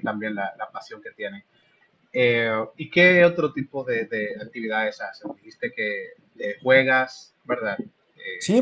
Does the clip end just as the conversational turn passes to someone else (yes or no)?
yes